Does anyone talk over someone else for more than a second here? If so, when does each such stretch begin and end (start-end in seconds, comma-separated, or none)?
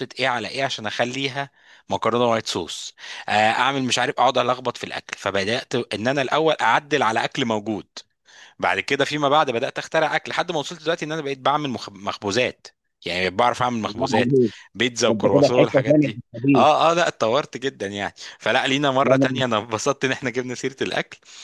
15.1-16.7